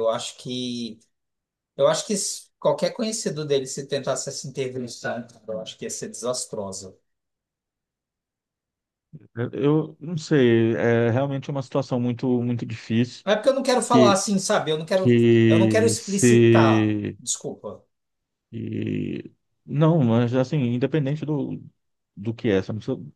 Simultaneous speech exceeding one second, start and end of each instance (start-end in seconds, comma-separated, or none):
14.9-17.2